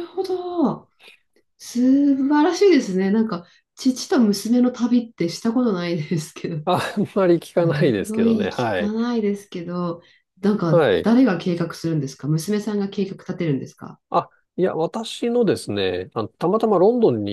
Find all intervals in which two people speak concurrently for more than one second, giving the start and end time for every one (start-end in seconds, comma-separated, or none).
7.6-8.9